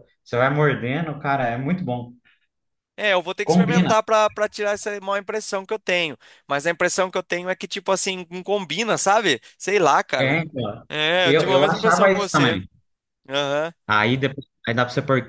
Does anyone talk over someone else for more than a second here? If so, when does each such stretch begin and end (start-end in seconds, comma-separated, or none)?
11.2-12.6